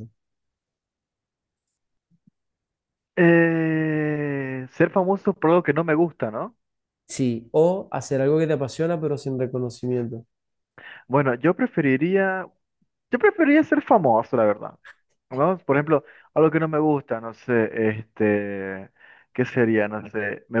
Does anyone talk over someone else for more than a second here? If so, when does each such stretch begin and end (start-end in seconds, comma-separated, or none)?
none